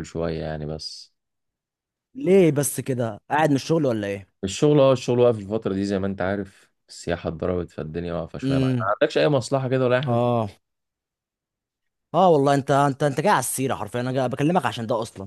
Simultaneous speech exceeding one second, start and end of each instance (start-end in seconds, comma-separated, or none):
none